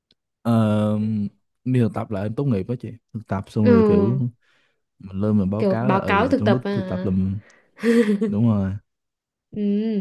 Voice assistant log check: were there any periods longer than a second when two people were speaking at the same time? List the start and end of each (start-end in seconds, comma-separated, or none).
5.6-7.1